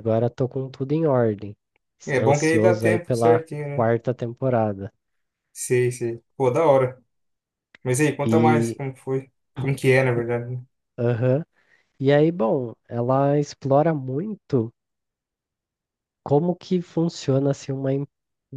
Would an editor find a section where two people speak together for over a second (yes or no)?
yes